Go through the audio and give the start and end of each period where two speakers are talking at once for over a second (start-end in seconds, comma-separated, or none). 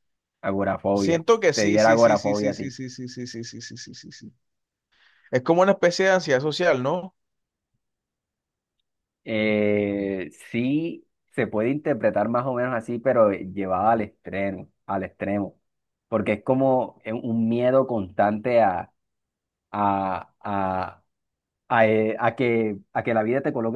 0.9-2.7